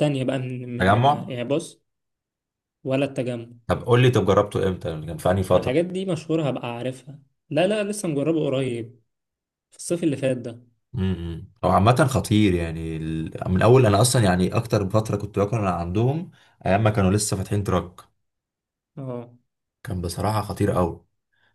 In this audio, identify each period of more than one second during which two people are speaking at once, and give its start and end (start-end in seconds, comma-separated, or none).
none